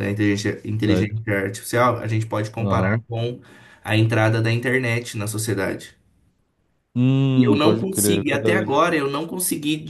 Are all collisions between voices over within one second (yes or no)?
no